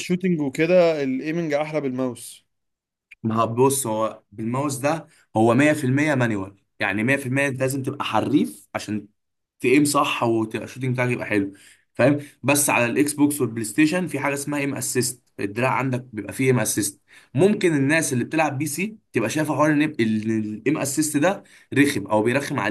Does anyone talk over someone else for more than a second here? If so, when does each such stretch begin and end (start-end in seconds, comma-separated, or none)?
none